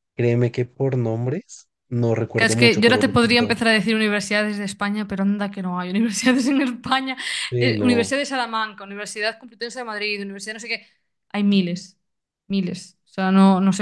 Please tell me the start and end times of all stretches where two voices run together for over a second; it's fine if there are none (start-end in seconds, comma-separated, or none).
2.4-3.6